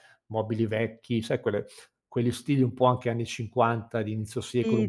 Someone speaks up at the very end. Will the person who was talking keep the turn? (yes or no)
yes